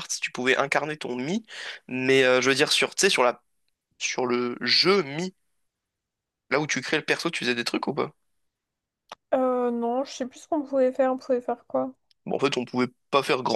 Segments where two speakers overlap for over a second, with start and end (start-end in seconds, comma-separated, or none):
none